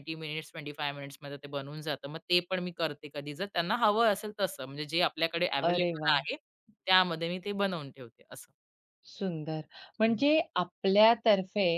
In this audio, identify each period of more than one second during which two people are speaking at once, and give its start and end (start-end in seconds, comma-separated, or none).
none